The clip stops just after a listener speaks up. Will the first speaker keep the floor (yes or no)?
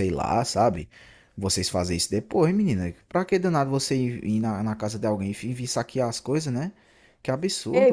no